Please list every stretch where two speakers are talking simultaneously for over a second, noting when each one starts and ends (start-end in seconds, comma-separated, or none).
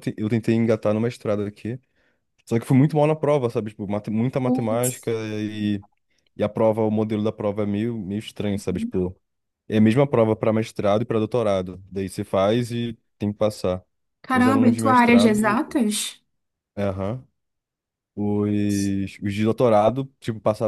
14.3-15.6